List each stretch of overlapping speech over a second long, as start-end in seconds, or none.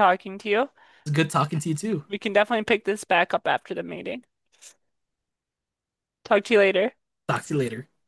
none